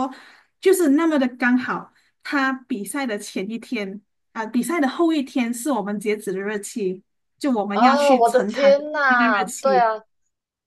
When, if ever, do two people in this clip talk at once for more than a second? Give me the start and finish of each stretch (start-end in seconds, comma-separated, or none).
7.7-9.9